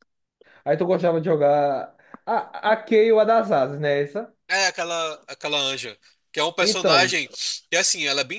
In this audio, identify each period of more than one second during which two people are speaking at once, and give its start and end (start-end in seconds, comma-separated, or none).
none